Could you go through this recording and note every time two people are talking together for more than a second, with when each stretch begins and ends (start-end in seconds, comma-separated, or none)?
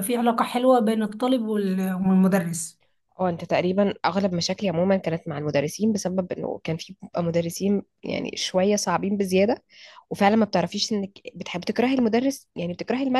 none